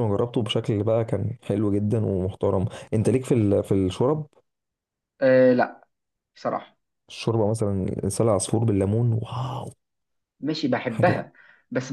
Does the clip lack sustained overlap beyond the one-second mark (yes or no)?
yes